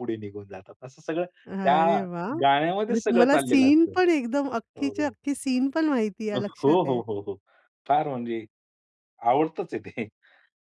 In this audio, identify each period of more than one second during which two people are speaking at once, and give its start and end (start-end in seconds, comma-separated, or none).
2.4-4.0